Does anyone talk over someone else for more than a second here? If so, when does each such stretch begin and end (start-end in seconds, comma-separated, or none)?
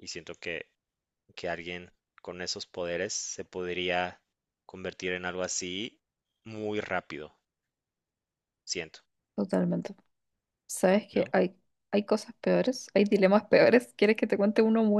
none